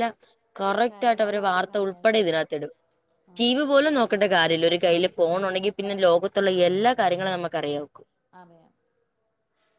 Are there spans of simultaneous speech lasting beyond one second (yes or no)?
yes